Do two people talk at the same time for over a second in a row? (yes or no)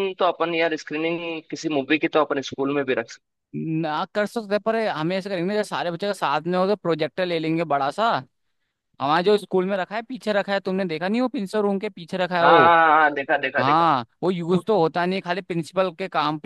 no